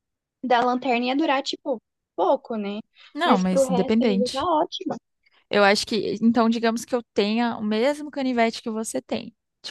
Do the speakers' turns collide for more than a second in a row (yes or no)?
yes